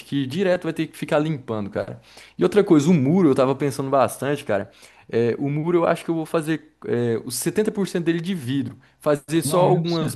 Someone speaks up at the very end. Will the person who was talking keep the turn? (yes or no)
yes